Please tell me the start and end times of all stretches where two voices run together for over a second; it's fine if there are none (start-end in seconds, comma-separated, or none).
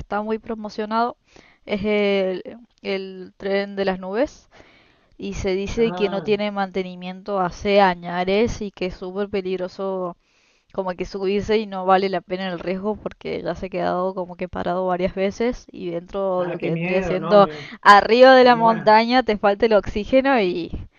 16.4-17.7